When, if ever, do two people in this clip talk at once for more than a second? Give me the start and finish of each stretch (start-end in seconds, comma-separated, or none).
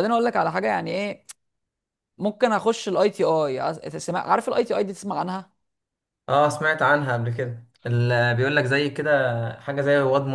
none